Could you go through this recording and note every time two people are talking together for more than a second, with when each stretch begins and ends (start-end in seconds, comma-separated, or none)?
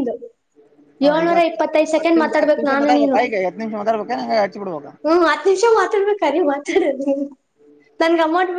1.1-3.2